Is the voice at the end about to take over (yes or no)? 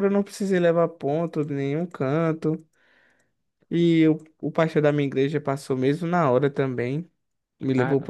no